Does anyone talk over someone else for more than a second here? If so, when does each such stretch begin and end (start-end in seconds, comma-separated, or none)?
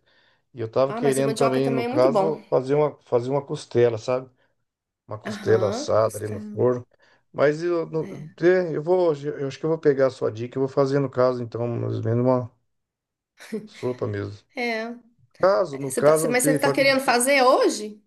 0.9-2.4, 5.2-6.7, 15.7-17.0